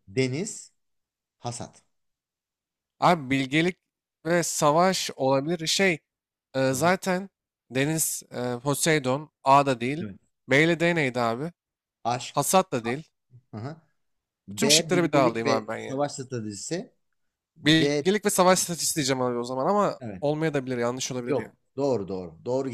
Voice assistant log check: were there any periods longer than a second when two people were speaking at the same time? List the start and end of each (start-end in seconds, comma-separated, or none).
14.5-16.0